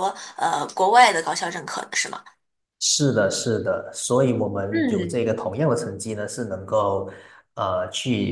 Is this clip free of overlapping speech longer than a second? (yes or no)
yes